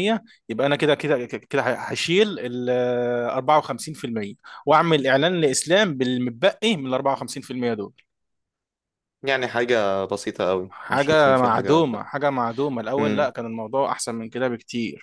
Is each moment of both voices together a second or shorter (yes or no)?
no